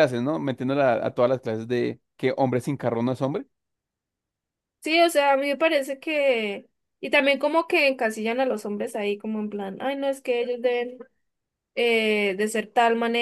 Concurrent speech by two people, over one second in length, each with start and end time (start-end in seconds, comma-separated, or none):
none